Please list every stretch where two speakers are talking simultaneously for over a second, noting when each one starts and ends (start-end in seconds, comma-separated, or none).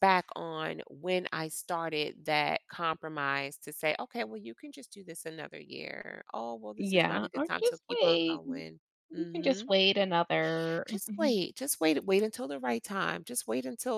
6.8-8.4